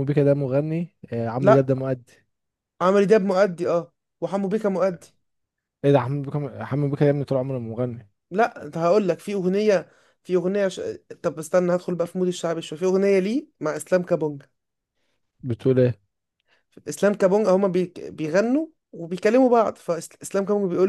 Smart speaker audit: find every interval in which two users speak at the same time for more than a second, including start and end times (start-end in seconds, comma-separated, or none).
none